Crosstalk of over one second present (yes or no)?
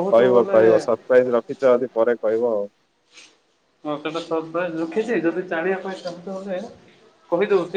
no